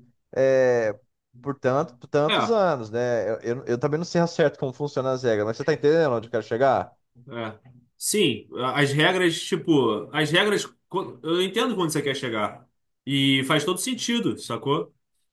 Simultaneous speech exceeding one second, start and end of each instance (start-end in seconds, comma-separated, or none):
none